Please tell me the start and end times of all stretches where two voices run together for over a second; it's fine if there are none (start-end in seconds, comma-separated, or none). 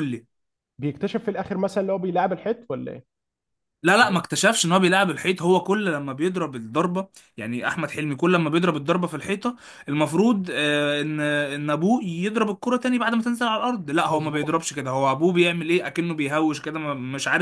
none